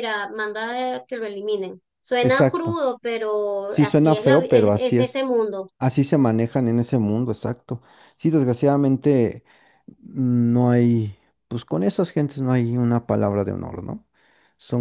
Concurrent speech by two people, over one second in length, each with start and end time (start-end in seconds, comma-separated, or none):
3.7-5.3